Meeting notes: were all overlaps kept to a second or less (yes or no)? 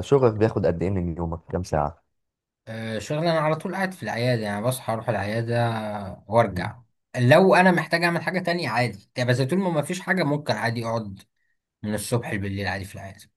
yes